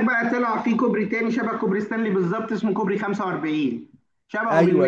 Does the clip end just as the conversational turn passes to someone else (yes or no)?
yes